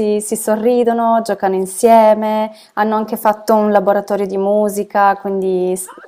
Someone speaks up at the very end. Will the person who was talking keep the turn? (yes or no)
no